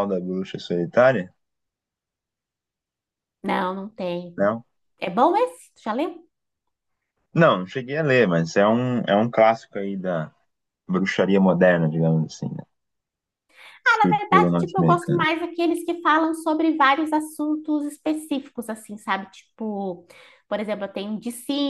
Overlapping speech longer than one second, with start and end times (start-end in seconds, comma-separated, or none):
14.0-15.2